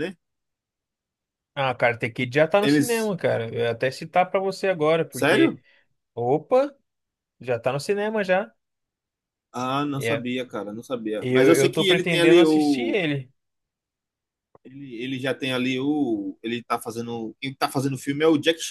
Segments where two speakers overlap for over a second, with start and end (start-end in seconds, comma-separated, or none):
11.2-13.0